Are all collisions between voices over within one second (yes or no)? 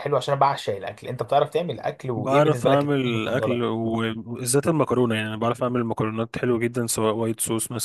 no